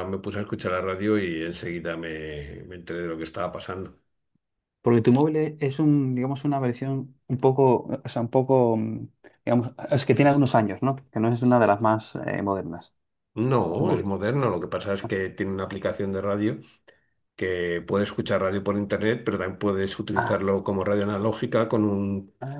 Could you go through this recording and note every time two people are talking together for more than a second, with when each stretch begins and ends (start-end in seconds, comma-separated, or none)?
none